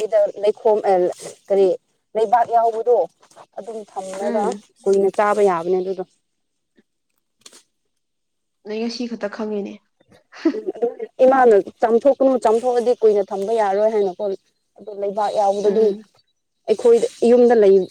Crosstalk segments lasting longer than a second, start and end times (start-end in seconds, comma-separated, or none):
none